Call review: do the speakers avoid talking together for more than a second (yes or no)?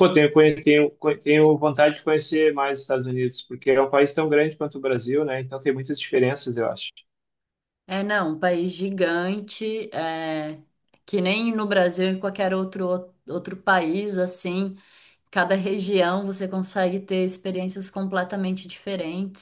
yes